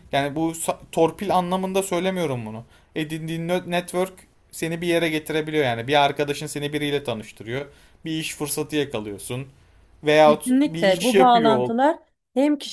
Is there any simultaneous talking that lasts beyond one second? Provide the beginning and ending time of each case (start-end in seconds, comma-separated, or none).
10.2-11.7